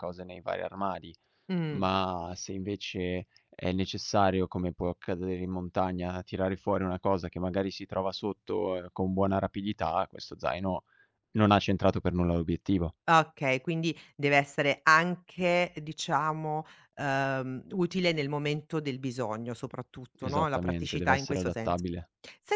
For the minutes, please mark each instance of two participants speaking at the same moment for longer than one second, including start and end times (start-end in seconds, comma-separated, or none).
20.2-21.9